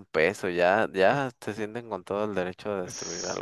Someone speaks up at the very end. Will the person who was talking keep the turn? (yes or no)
no